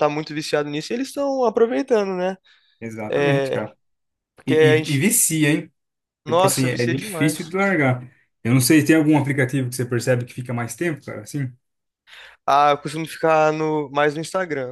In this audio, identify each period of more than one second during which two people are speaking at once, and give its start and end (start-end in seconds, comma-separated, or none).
6.3-7.6